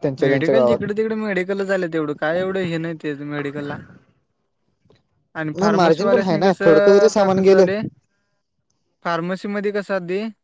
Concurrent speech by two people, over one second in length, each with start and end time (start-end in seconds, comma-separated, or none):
5.6-7.7